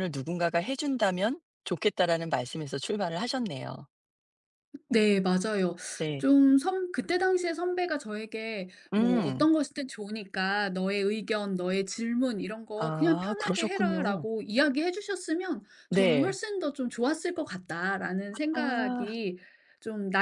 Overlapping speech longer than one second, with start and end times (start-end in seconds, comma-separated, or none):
12.8-14.2